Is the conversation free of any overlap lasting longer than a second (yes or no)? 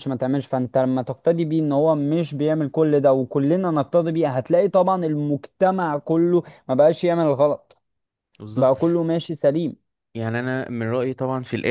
yes